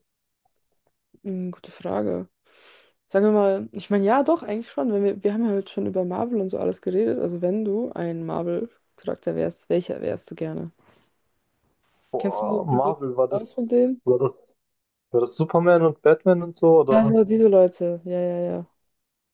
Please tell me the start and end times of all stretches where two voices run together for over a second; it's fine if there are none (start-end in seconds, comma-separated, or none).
12.2-13.6